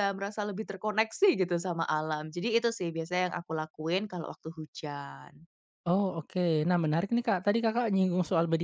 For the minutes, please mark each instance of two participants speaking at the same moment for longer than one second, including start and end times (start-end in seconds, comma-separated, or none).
none